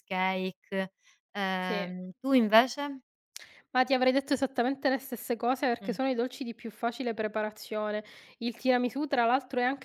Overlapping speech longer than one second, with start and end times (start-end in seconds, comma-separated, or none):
none